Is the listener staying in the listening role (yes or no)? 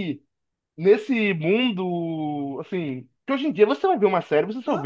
no